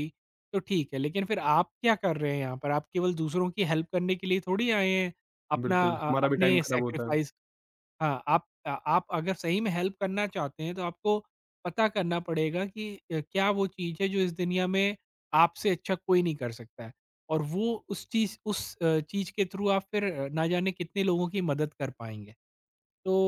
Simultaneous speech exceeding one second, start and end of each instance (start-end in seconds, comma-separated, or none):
5.7-7.2